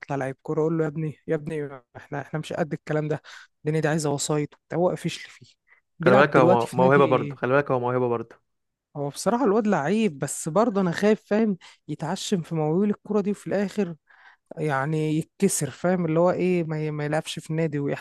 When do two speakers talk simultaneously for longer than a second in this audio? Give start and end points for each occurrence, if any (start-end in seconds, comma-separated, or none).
6.0-7.3